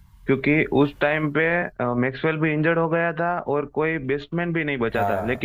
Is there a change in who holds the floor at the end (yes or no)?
no